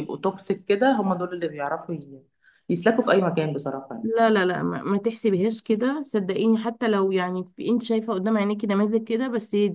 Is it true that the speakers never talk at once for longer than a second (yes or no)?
yes